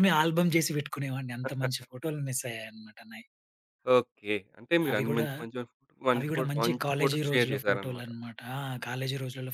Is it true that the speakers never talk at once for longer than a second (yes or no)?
no